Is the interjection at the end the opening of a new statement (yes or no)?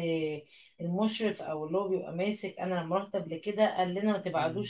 no